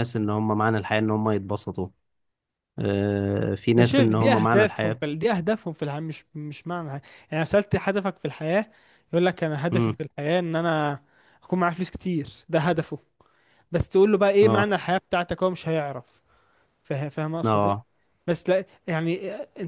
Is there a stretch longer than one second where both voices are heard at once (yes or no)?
yes